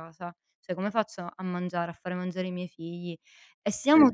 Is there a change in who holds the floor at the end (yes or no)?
no